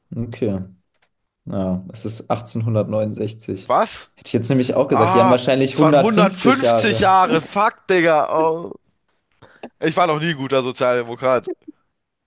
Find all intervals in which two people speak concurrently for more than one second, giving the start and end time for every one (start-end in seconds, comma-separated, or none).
4.9-7.2